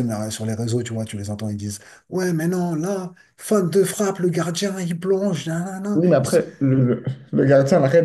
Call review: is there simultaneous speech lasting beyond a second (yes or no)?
no